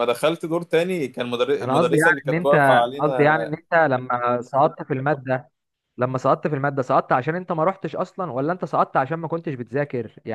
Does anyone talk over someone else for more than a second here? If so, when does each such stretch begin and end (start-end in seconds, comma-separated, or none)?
1.6-3.3